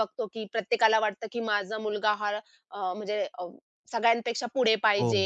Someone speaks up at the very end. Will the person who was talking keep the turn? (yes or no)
no